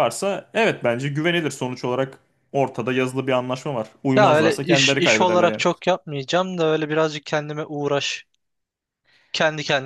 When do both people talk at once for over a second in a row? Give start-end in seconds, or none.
4.2-5.6